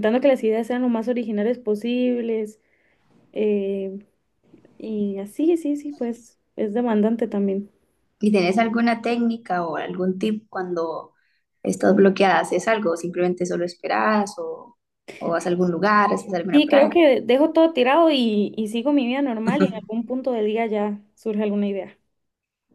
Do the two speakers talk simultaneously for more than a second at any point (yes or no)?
no